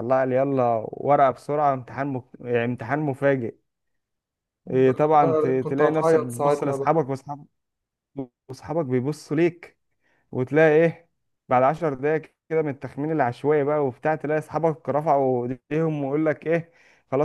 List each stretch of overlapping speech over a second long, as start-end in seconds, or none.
4.7-7.0